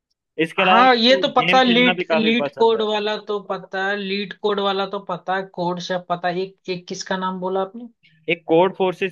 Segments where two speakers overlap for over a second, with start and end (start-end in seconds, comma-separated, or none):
0.6-2.9